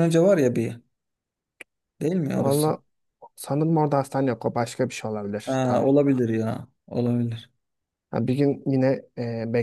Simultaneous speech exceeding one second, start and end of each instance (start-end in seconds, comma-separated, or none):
none